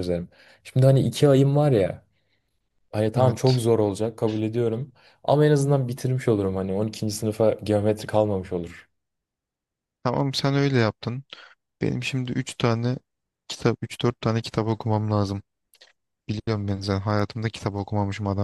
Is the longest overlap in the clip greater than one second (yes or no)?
no